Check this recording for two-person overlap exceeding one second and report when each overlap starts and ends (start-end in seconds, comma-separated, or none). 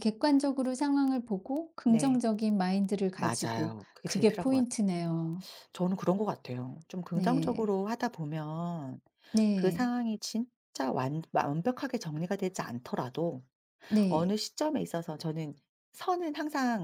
3.2-4.7